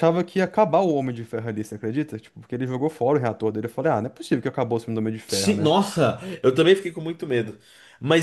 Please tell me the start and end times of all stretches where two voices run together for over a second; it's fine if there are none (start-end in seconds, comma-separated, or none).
none